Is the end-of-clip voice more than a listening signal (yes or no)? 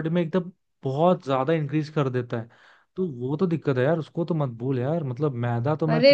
no